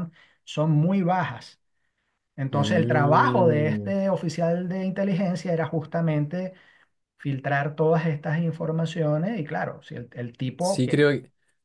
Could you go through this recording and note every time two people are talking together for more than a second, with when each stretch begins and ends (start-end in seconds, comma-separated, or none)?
2.5-3.9